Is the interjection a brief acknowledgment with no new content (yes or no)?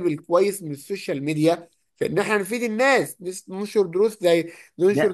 yes